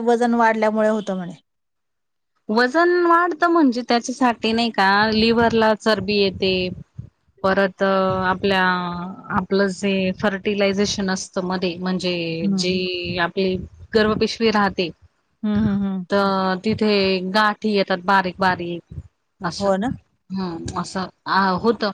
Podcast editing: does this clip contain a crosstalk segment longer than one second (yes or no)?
no